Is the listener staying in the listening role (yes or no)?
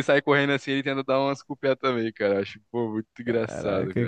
no